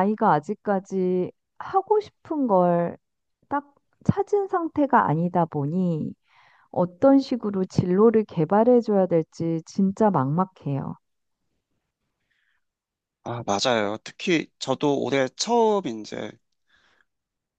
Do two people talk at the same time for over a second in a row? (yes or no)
no